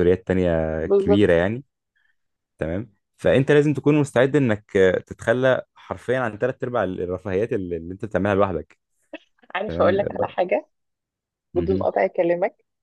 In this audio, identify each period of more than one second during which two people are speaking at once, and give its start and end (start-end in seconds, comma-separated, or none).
none